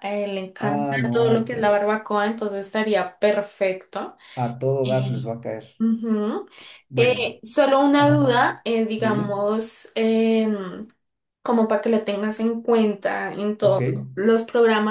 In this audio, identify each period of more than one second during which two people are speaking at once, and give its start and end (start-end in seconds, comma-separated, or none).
0.6-2.0